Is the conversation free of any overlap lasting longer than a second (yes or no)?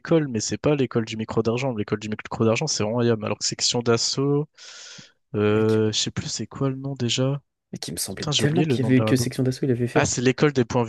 no